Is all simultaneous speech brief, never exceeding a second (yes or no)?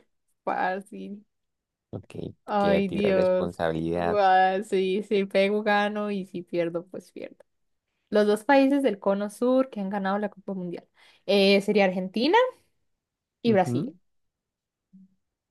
no